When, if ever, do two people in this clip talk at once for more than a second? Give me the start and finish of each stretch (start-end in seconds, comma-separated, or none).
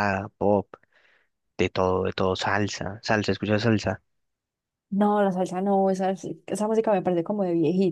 none